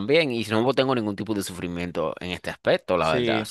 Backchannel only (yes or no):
no